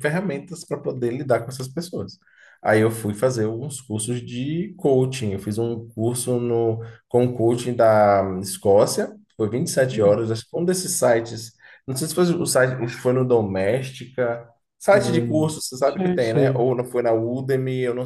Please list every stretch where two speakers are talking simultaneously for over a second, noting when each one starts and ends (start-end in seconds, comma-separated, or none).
14.9-16.8